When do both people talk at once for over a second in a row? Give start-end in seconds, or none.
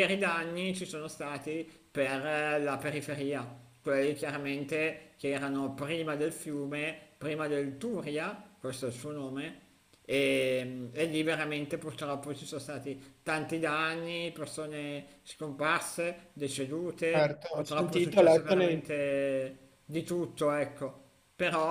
17.1-18.8